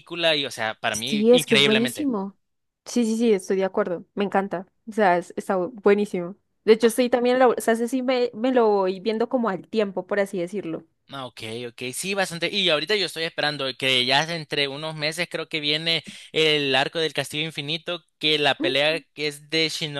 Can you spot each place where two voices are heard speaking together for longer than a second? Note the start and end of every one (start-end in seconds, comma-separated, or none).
0.9-2.1